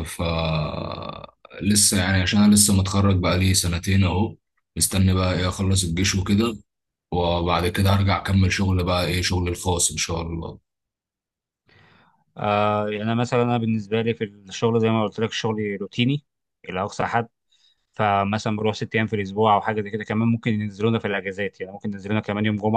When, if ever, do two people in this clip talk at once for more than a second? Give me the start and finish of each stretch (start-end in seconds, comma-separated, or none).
none